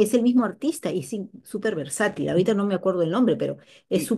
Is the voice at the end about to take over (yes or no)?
yes